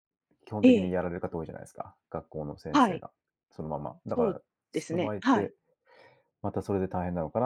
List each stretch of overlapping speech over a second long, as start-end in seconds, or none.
4.1-5.5